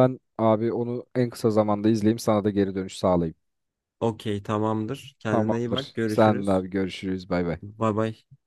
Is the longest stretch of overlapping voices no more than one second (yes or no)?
no